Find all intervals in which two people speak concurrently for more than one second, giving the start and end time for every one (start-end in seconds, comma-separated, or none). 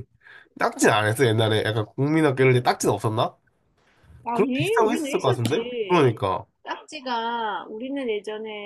4.3-6.0